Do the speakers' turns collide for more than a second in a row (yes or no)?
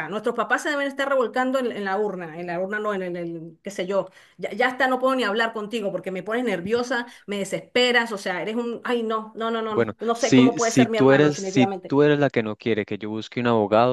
yes